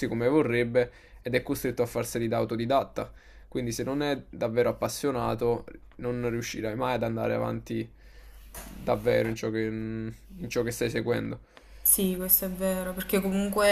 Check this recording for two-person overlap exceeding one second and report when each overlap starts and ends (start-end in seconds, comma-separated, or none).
none